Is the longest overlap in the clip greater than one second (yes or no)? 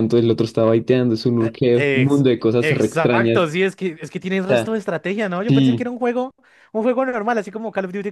yes